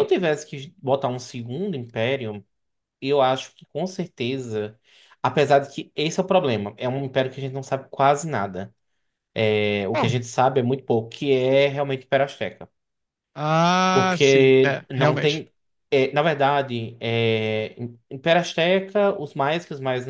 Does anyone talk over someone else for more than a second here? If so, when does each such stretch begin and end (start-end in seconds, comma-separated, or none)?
13.9-15.4